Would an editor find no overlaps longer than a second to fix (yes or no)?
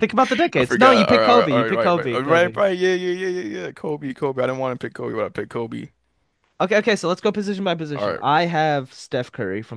no